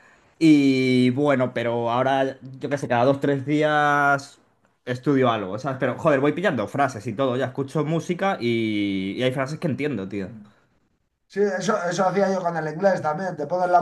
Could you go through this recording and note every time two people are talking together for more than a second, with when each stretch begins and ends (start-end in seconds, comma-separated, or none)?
none